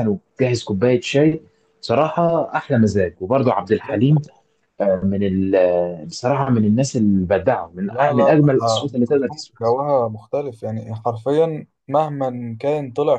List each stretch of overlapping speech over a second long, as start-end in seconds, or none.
7.8-9.7